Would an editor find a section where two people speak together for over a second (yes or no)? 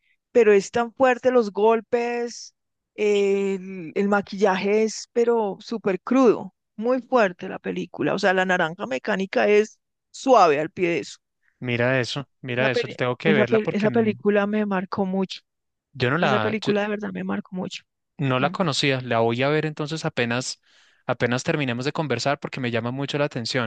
yes